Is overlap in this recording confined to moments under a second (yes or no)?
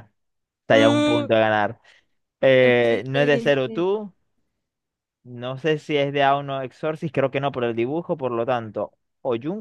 no